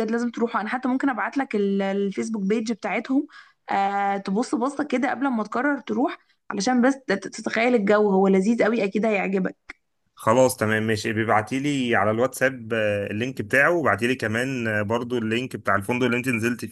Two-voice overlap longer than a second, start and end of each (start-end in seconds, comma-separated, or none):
none